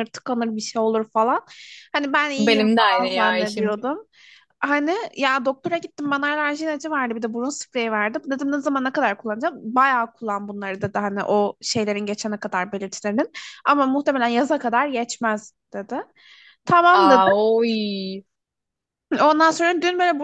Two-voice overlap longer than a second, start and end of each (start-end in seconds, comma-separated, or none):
2.4-3.7